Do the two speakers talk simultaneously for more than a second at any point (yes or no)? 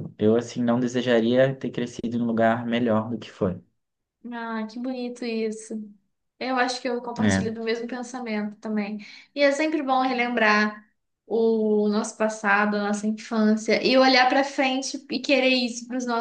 no